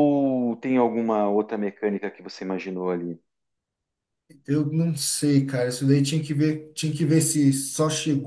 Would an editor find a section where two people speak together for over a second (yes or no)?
no